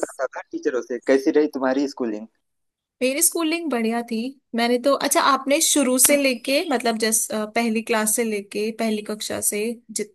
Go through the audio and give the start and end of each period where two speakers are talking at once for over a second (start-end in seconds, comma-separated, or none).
none